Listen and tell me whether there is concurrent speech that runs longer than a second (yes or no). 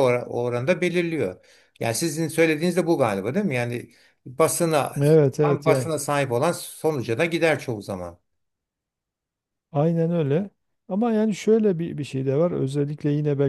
no